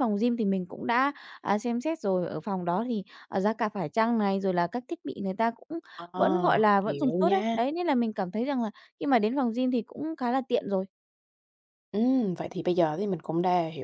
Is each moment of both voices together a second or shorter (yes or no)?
no